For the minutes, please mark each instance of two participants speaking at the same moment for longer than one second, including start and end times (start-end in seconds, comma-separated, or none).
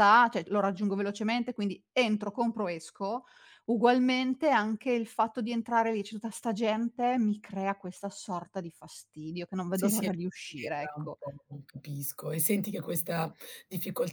9.8-11.2